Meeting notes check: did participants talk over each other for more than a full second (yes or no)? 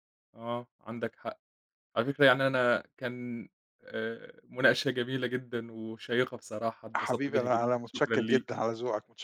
yes